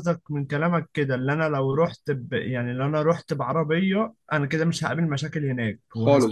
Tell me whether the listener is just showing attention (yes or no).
no